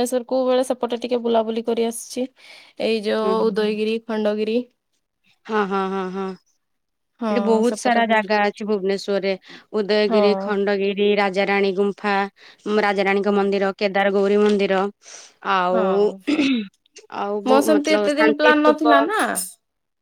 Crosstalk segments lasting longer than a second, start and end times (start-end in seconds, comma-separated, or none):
17.5-19.0